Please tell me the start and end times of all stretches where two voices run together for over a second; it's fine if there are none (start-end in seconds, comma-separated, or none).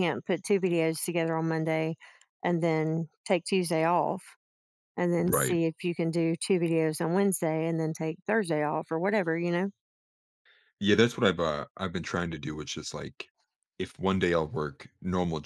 none